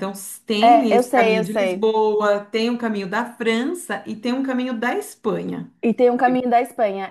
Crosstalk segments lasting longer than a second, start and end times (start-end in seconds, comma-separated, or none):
0.6-1.9